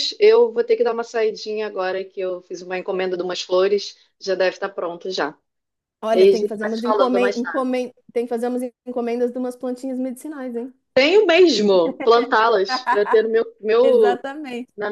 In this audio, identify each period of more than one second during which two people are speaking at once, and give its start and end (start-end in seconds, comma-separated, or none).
6.1-7.4